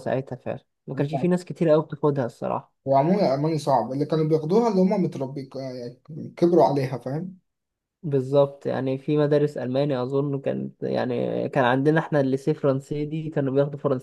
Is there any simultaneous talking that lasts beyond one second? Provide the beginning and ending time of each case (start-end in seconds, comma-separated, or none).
none